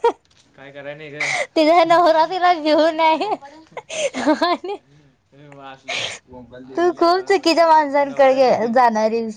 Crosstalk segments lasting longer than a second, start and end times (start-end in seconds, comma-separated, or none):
6.8-8.8